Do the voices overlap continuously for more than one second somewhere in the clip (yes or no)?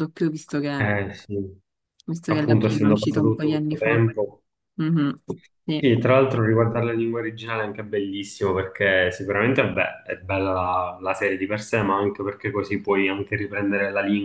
yes